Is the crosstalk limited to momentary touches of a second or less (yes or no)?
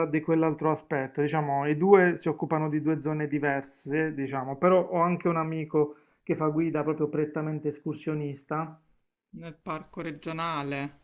yes